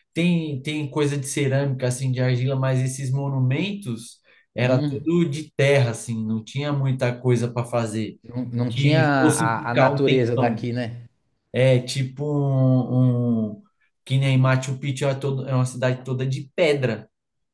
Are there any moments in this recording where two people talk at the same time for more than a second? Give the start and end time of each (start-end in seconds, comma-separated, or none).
8.7-10.7